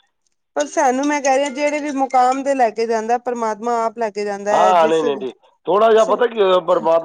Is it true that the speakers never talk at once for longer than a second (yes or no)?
yes